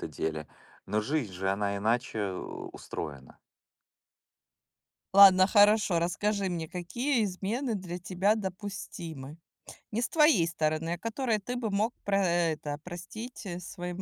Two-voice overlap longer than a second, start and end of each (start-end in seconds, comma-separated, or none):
none